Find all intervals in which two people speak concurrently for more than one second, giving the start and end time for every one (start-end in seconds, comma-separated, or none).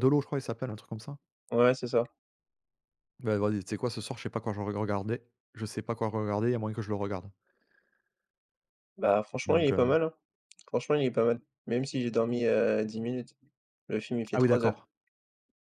none